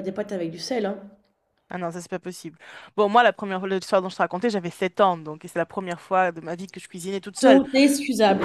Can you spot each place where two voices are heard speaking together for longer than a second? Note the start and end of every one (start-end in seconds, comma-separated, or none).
none